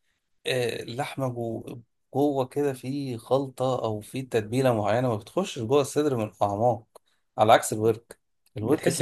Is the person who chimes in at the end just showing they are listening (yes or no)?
no